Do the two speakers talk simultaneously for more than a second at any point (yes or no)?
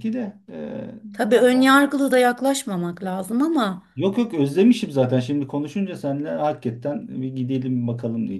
no